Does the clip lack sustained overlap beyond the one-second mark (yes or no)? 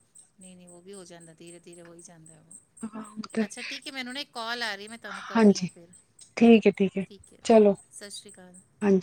yes